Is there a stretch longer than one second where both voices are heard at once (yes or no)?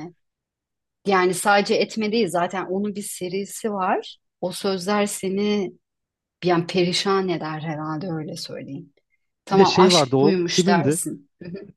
yes